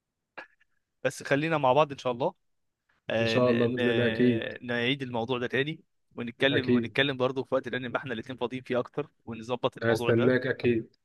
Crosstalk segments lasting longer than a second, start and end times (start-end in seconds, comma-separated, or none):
3.2-4.5